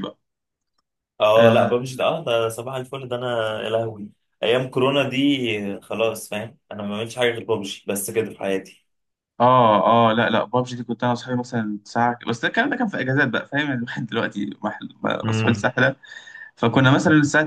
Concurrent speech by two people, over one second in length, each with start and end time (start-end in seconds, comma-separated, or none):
none